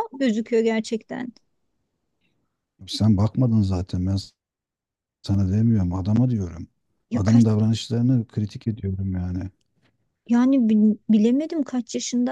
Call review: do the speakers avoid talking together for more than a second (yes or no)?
yes